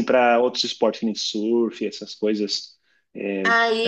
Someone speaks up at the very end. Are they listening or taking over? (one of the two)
taking over